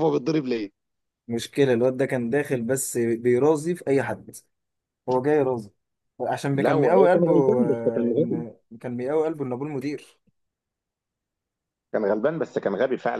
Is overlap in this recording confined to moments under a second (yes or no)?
no